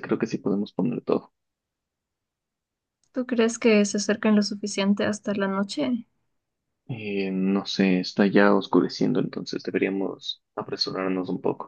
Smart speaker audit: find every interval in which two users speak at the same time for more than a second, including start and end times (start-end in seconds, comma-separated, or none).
none